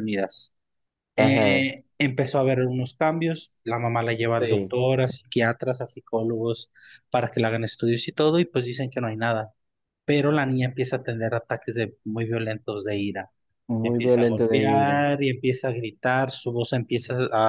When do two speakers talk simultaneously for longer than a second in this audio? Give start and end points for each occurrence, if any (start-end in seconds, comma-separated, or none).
13.8-15.0